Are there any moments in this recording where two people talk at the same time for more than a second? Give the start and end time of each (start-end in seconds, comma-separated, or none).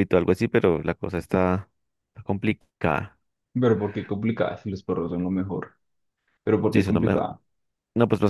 none